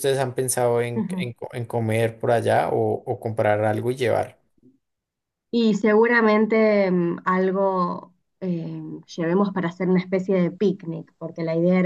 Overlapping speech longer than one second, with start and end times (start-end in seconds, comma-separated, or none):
none